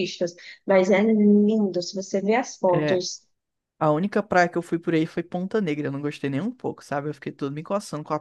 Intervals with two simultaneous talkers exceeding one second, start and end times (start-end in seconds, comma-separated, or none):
none